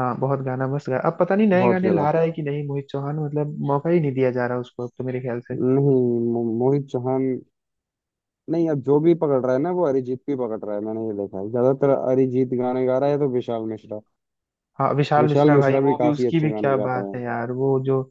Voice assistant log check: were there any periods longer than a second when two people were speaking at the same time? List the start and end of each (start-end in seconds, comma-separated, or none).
15.2-17.1